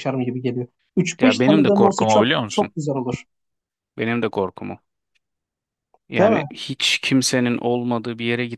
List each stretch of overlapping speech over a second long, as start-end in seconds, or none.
1.2-2.7